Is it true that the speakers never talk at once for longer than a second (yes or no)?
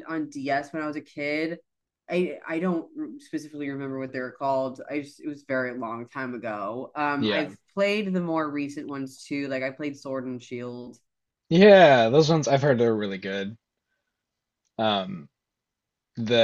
yes